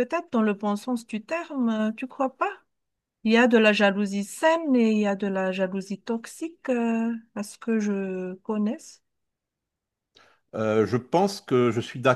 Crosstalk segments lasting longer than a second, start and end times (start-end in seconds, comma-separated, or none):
none